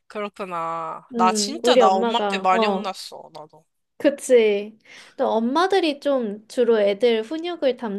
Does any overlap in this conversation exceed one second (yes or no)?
yes